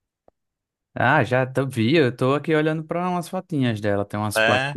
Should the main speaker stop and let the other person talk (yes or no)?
yes